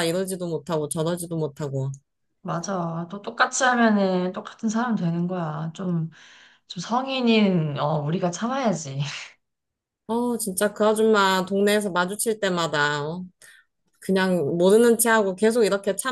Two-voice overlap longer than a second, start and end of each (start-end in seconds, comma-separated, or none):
none